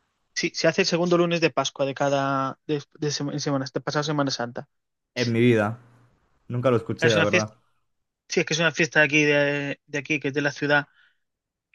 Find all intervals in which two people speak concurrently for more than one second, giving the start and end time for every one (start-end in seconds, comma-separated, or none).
none